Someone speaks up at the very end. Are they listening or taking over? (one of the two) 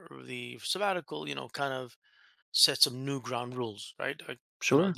taking over